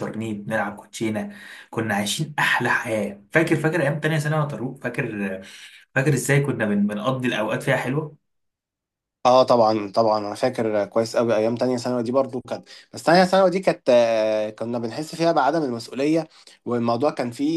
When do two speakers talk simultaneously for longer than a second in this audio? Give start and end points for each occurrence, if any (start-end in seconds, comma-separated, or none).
none